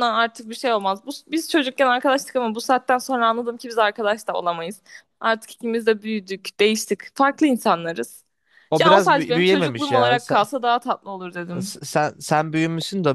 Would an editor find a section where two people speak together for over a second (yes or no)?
yes